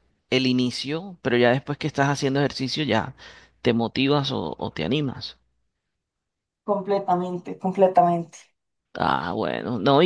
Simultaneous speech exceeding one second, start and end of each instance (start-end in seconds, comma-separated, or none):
none